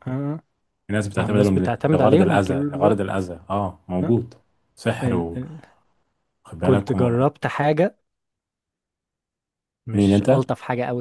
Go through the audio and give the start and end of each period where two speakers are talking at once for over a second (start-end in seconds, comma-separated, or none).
1.1-3.2